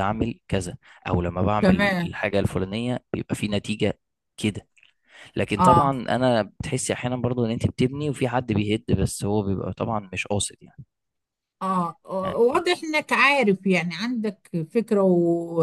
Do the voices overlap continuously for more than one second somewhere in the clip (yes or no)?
no